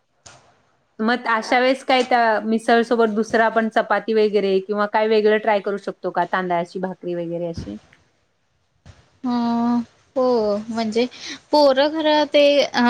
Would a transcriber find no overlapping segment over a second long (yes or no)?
yes